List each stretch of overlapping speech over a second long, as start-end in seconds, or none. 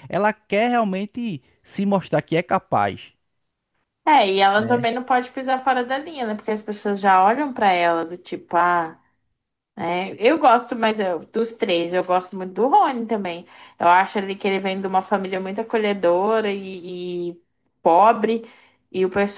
none